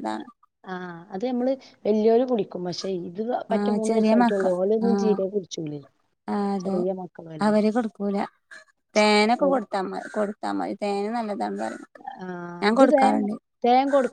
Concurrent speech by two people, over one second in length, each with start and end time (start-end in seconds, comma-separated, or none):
none